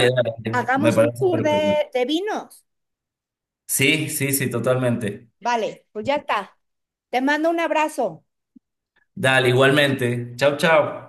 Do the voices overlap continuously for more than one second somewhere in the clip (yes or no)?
yes